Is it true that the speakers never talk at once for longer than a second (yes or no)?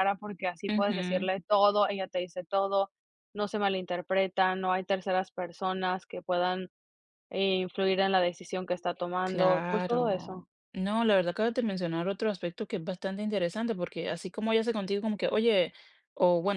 no